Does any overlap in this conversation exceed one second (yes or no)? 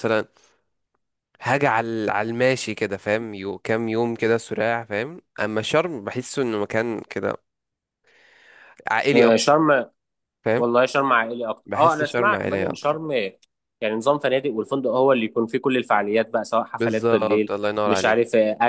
yes